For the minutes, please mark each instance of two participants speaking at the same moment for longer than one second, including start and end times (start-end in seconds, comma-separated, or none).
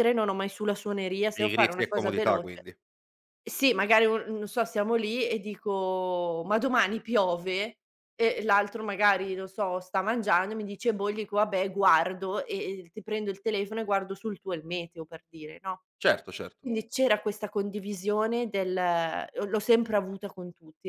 1.3-2.6